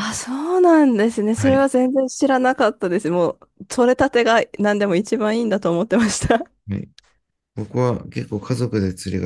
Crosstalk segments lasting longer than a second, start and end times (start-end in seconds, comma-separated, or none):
none